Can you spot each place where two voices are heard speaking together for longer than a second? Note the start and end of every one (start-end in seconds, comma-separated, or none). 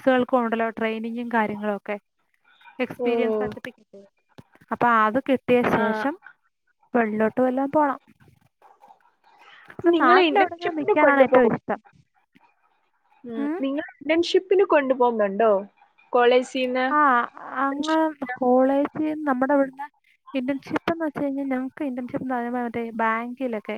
9.9-11.5